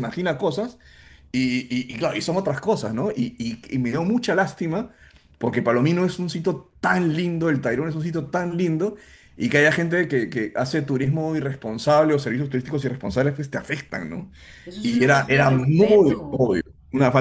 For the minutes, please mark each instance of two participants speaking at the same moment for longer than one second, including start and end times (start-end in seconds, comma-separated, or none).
14.8-16.5